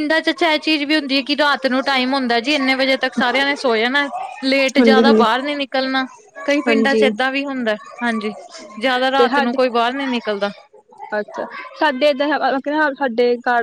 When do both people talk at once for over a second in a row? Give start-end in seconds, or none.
none